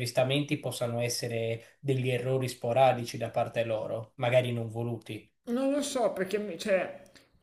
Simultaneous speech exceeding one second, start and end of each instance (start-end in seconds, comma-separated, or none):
none